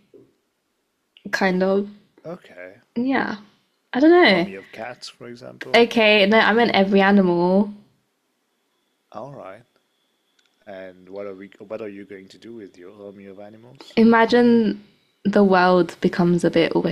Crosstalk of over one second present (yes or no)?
no